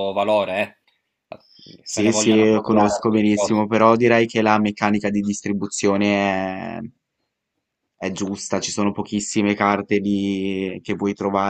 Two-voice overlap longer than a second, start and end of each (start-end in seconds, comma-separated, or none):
1.9-3.7